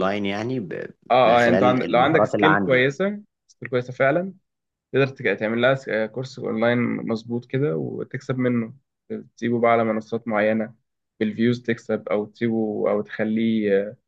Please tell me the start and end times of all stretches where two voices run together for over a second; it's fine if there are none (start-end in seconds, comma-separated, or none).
1.2-2.9